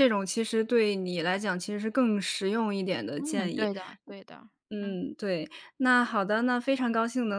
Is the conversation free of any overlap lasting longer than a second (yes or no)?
yes